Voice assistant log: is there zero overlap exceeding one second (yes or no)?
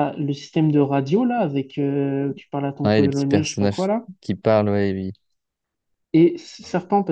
no